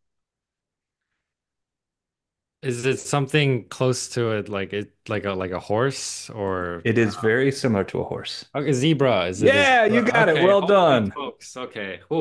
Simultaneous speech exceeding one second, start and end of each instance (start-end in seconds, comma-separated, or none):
9.4-11.2